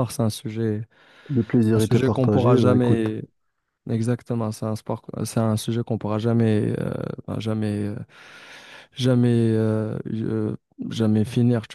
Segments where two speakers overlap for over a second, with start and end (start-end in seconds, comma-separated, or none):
1.8-3.1